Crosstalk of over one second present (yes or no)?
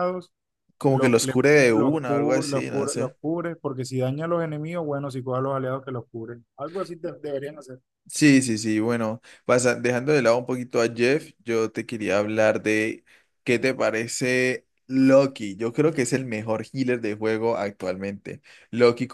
yes